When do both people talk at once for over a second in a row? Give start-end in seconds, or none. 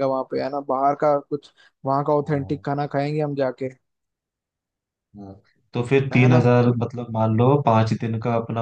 none